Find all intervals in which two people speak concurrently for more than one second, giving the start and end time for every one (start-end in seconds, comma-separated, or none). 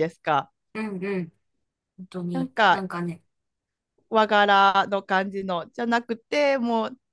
none